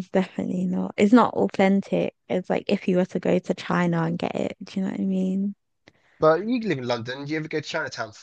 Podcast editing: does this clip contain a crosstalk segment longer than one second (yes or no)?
no